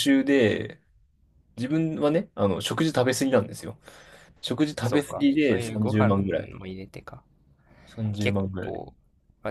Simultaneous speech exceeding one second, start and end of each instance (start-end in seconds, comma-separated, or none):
4.8-6.1